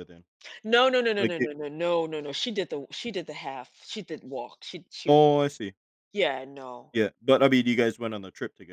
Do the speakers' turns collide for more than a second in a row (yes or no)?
no